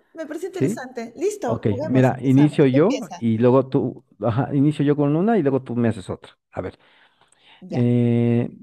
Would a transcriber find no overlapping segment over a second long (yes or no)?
no